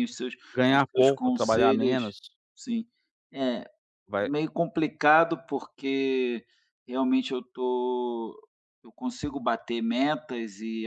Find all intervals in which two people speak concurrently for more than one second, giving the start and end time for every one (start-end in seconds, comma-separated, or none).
0.7-2.2